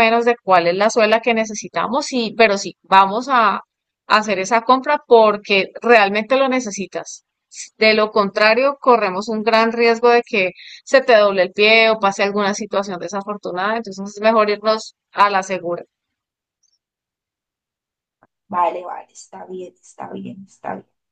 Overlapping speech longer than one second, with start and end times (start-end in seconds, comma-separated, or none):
none